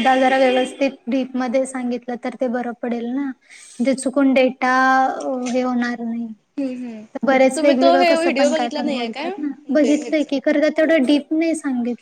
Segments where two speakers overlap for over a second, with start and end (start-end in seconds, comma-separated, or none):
7.5-10.3